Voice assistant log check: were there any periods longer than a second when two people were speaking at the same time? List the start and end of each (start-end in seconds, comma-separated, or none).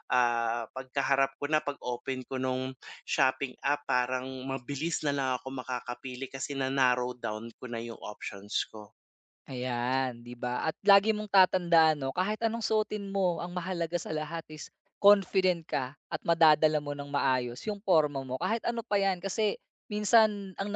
none